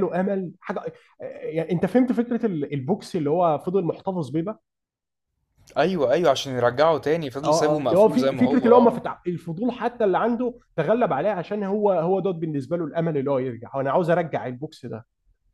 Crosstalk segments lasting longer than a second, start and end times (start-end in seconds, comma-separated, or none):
7.4-9.0